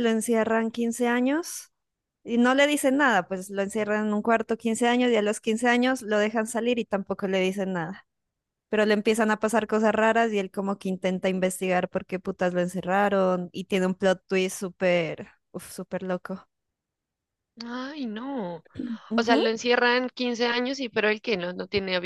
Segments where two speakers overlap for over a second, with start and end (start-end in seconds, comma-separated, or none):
none